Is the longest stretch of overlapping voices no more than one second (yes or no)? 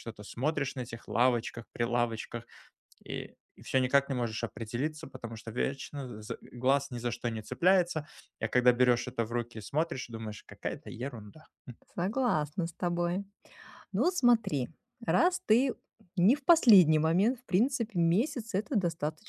yes